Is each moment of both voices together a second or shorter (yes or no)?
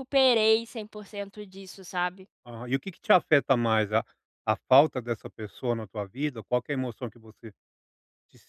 yes